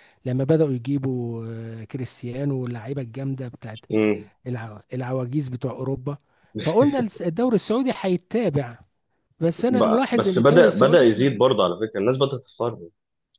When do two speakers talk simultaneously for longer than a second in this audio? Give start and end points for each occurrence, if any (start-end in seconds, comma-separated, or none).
9.6-11.4